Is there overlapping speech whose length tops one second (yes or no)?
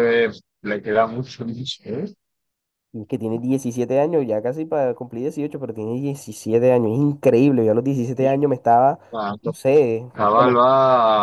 no